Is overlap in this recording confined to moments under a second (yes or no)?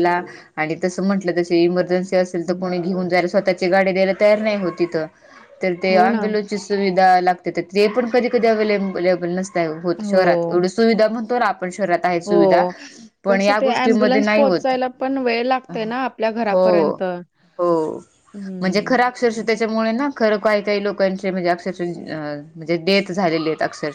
no